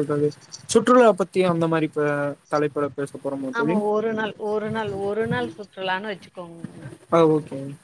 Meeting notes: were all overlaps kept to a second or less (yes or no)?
yes